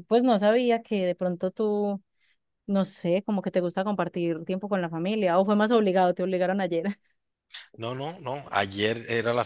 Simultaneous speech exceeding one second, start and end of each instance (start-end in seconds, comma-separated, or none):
none